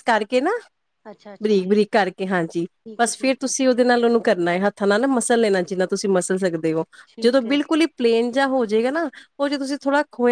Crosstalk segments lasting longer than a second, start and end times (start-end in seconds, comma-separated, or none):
none